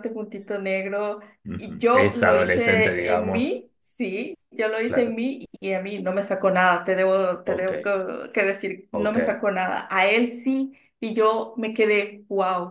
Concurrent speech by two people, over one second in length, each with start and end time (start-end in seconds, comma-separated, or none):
1.6-3.6